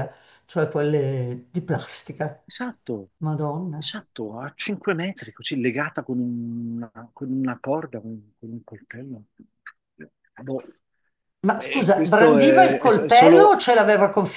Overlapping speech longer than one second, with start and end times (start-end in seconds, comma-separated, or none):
11.5-13.6